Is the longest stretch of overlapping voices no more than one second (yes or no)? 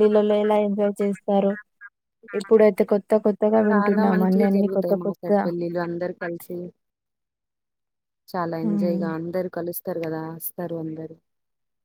no